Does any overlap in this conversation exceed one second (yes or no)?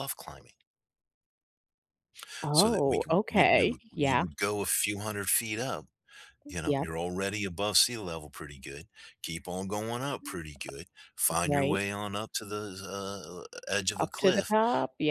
yes